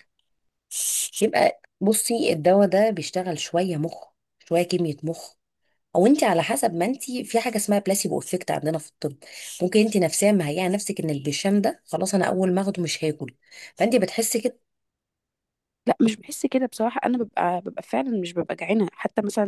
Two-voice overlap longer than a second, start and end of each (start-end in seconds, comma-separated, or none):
none